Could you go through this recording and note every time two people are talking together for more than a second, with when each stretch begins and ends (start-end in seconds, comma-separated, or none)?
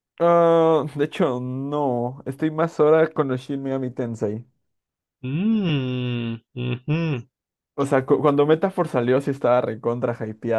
none